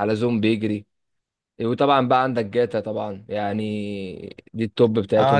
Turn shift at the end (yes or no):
yes